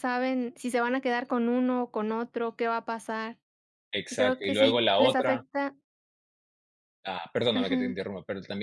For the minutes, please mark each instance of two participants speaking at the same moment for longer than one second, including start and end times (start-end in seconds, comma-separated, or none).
4.1-5.5